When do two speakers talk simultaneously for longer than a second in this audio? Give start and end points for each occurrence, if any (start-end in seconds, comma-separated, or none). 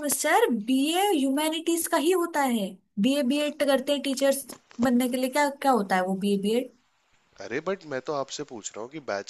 none